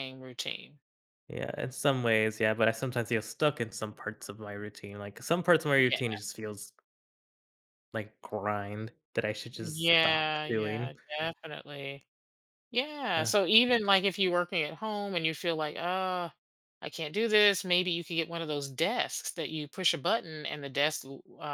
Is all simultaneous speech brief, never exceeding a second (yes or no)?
no